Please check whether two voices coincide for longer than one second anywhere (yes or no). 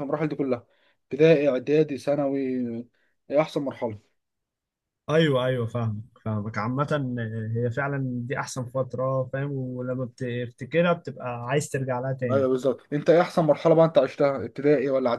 no